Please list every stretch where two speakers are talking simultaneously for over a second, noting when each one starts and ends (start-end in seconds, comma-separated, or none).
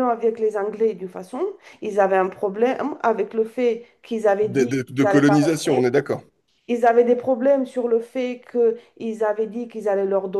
4.5-5.8